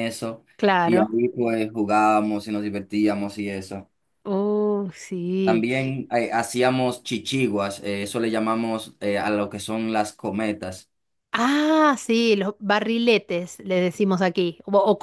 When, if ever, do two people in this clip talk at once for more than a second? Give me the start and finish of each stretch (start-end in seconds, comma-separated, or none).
none